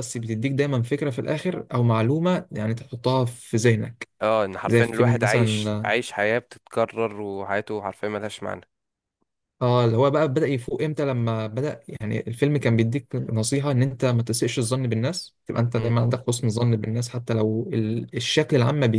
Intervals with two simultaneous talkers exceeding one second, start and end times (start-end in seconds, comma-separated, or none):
4.6-5.9